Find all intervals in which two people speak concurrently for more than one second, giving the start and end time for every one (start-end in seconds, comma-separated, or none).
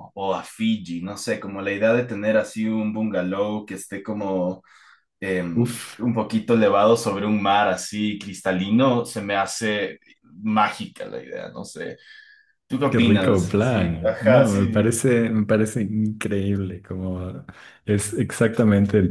12.9-15.0